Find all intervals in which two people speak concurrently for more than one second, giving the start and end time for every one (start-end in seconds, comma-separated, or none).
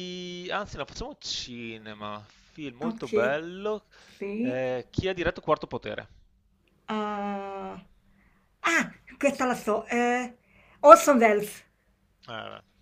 none